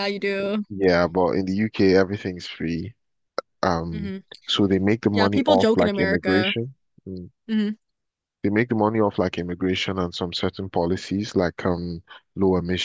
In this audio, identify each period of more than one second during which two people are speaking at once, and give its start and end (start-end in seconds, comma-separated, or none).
5.1-6.5